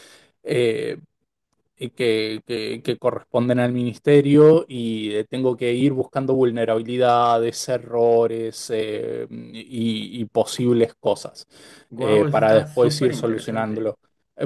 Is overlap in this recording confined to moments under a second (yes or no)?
no